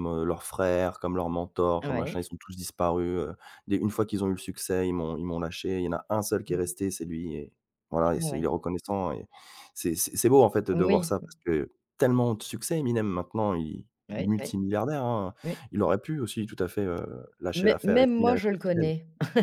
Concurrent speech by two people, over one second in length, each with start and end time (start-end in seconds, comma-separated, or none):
17.5-18.9